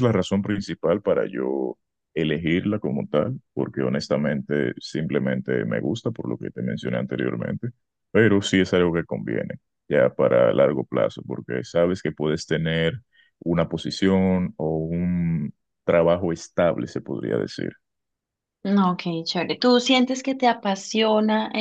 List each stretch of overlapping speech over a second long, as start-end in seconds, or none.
none